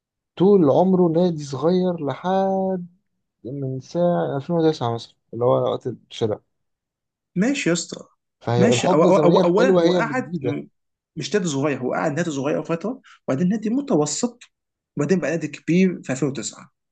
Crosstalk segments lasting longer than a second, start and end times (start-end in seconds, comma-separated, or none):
8.6-10.6